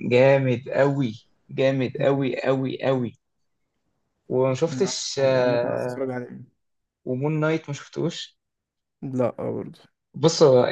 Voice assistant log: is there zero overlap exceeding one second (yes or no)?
no